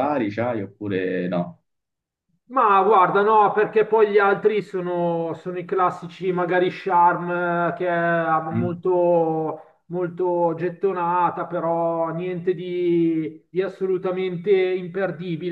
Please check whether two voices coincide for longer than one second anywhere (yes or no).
no